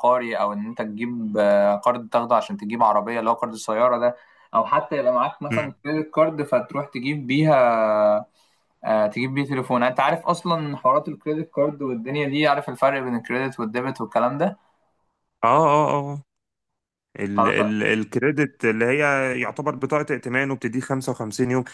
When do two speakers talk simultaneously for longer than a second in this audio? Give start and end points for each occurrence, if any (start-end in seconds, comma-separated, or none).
none